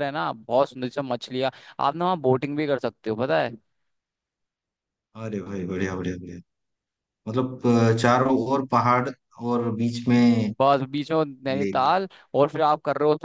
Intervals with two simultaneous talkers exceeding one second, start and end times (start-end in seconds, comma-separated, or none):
none